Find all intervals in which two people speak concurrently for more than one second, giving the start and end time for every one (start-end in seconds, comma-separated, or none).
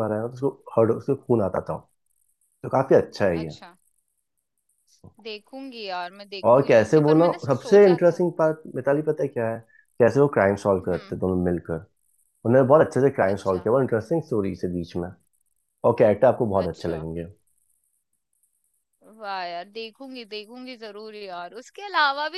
6.5-8.2